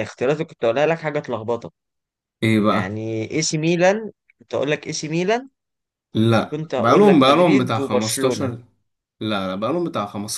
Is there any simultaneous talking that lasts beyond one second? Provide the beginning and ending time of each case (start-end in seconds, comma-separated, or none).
6.5-8.5